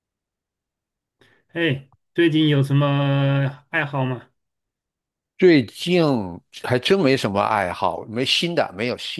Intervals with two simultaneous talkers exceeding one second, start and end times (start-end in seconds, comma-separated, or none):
none